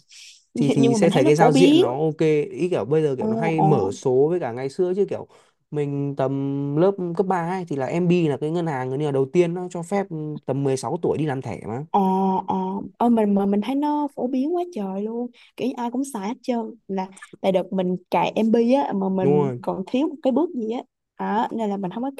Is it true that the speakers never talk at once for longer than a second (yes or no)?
no